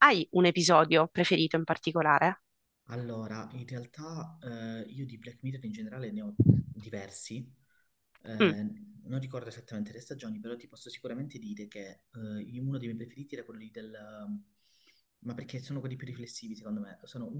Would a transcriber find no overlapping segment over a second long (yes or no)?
yes